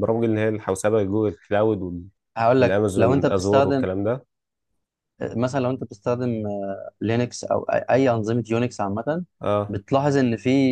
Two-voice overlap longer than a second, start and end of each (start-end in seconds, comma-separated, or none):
2.6-3.9